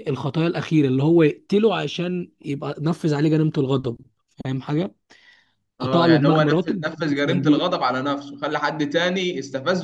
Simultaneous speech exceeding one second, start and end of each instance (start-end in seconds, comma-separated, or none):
5.8-7.7